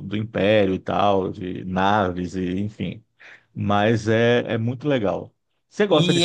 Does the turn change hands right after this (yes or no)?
yes